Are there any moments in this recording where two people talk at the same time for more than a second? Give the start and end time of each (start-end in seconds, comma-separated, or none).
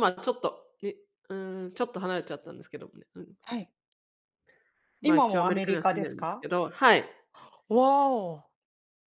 5.0-6.5